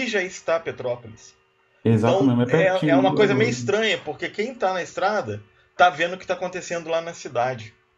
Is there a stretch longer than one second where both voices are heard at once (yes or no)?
yes